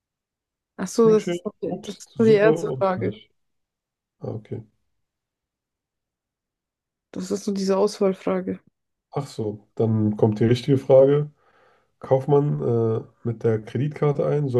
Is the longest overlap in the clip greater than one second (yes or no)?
yes